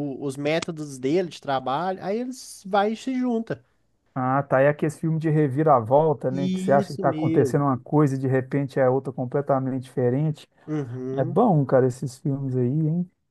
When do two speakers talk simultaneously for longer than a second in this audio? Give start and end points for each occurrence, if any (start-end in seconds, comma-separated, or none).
6.3-7.6